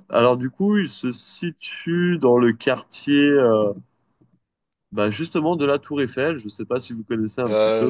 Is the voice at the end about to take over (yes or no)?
yes